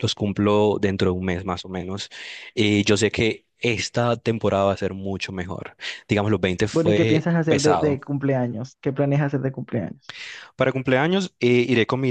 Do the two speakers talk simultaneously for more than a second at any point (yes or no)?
yes